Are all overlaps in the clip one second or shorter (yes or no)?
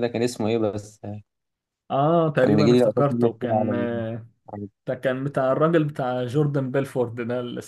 no